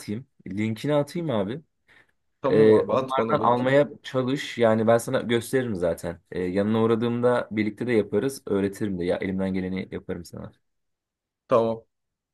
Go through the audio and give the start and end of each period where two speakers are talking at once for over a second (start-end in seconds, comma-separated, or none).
2.5-3.8